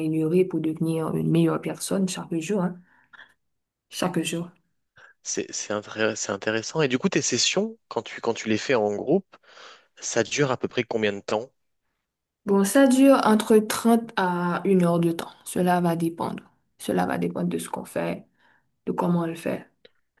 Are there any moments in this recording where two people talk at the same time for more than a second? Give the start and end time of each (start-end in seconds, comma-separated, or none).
none